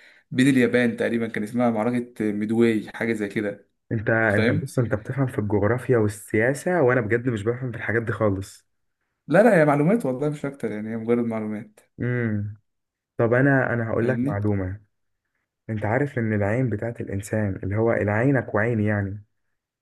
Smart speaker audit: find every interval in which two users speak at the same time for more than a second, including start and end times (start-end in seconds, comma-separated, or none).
none